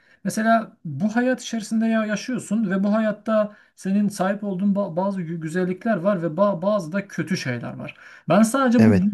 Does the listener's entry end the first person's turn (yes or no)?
no